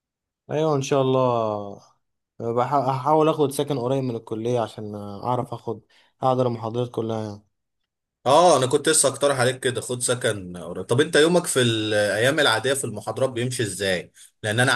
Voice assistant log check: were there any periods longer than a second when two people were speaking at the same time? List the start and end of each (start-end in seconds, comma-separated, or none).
none